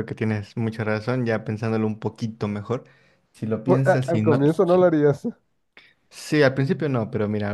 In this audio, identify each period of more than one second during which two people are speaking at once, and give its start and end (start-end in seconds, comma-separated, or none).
3.6-4.9